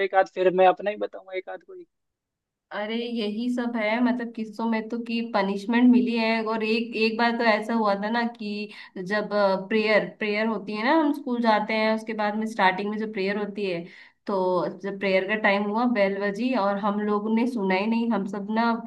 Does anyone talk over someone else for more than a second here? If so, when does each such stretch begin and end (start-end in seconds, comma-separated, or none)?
none